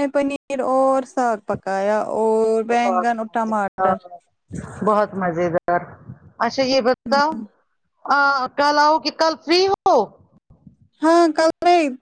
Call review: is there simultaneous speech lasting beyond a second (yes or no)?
yes